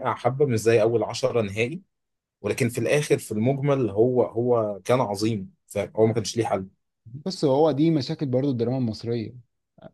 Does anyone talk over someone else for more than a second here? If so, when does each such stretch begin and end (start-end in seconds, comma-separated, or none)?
none